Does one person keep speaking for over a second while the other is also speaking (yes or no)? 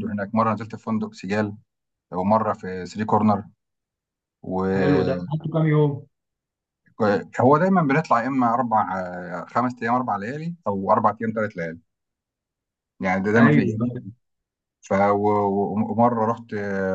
no